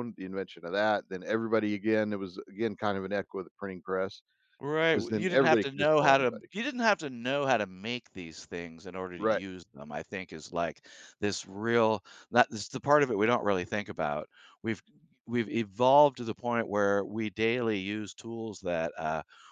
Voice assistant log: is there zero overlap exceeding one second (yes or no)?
no